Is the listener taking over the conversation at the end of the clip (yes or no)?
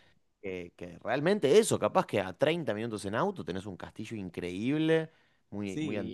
yes